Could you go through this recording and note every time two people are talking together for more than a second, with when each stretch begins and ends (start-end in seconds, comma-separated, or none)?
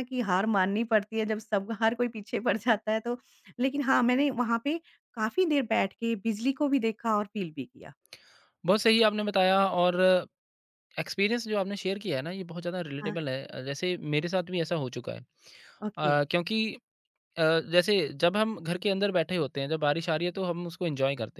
none